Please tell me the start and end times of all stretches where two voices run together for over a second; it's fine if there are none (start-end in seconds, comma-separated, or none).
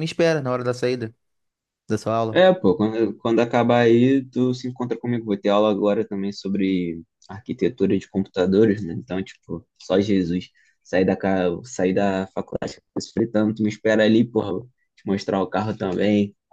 none